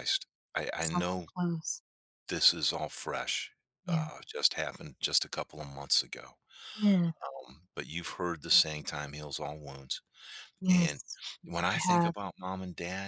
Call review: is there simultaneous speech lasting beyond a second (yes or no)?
no